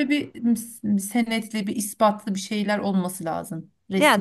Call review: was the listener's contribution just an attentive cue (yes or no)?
no